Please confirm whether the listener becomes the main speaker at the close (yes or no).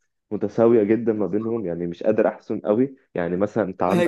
yes